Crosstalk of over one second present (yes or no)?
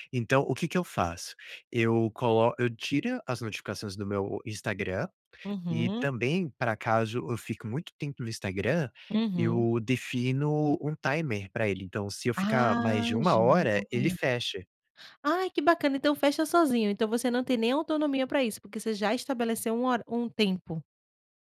yes